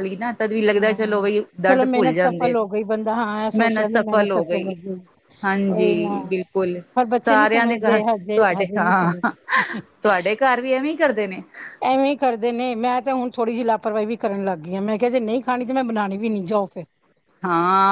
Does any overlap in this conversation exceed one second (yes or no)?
yes